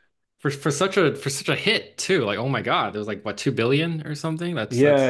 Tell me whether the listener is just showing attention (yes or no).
no